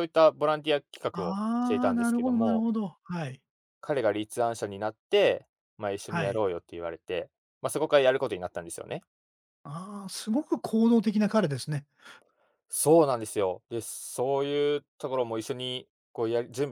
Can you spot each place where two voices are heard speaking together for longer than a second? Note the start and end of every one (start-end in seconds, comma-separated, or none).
1.1-2.6